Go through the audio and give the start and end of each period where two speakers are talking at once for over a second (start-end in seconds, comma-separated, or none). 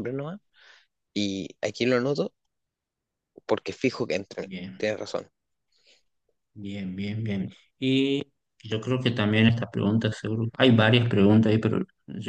none